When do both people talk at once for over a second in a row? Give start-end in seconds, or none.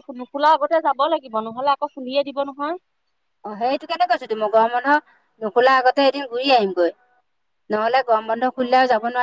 none